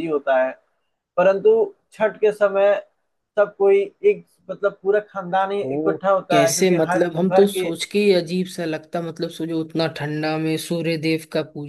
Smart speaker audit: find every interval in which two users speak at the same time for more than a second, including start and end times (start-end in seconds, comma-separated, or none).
5.6-7.7